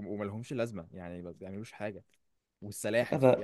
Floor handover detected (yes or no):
no